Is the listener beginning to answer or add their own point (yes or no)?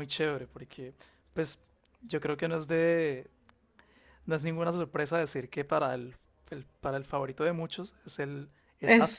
yes